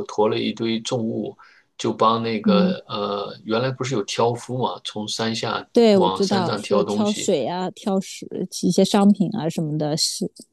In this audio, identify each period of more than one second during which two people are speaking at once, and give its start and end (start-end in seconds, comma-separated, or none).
5.7-7.3